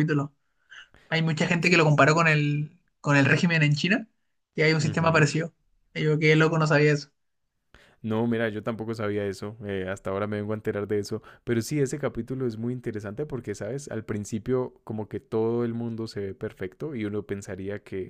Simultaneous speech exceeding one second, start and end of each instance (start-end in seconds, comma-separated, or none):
none